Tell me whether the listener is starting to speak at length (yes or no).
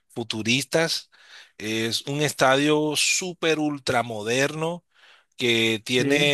no